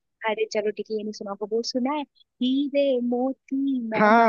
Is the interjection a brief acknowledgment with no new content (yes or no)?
no